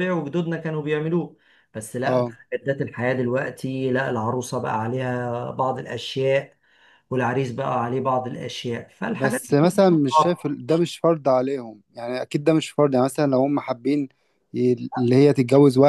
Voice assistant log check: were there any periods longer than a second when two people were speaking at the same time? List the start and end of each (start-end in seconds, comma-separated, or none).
9.1-10.4